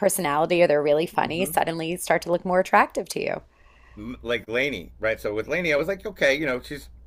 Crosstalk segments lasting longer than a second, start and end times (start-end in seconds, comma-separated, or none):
none